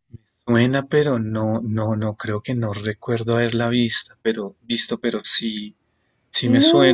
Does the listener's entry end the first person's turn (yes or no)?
yes